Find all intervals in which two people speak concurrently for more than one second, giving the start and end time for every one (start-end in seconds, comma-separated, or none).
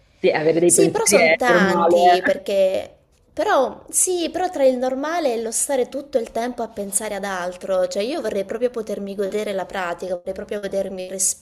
0.6-2.4